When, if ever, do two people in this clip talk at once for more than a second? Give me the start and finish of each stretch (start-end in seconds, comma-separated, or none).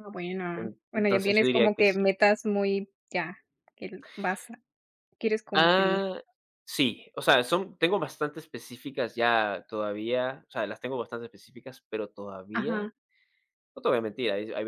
0.6-2.1